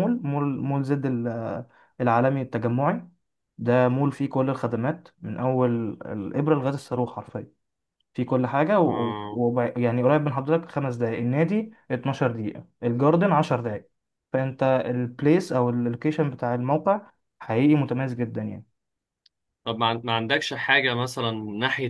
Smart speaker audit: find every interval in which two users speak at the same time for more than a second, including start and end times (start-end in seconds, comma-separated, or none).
none